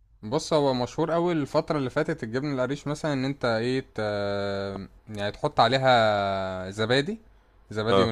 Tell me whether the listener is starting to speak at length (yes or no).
no